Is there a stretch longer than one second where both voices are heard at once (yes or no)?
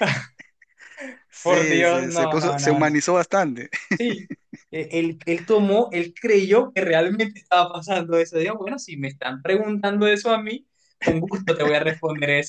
yes